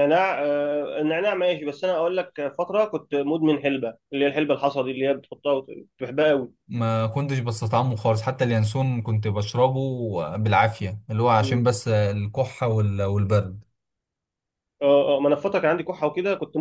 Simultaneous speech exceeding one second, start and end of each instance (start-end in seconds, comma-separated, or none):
none